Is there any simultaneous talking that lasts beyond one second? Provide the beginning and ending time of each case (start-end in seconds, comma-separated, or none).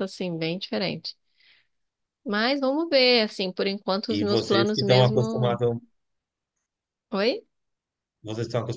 4.1-5.6